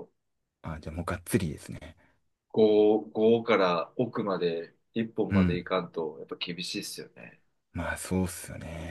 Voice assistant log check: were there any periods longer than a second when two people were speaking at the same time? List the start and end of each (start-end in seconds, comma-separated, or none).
none